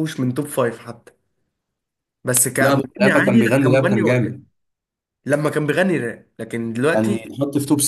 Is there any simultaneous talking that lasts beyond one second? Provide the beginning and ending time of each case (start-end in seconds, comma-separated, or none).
2.6-4.4